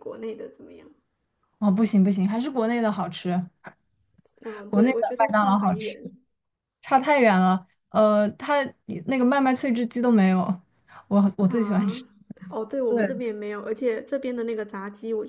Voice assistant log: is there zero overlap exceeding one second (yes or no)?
no